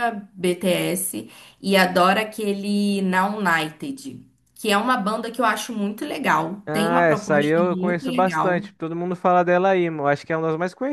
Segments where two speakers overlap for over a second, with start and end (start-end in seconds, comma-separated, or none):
6.7-8.7